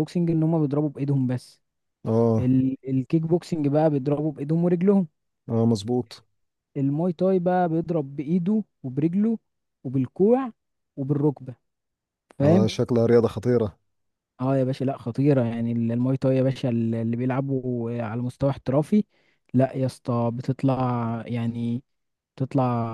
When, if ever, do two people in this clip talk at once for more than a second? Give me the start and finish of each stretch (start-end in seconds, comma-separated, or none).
none